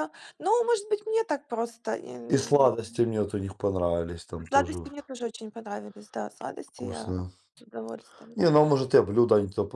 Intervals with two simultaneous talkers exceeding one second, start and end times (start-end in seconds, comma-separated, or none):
none